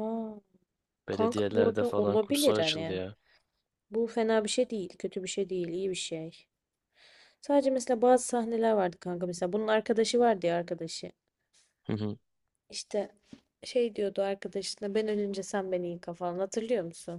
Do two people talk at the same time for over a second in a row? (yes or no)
yes